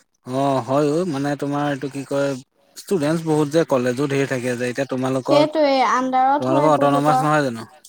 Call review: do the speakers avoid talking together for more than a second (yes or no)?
no